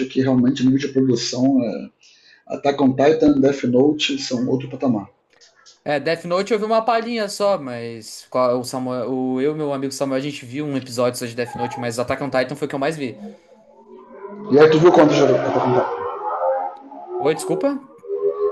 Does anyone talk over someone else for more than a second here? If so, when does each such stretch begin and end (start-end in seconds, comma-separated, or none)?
none